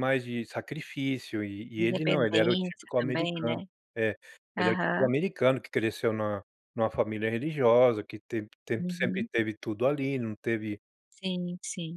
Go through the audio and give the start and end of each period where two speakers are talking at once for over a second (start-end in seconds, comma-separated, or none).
1.8-3.6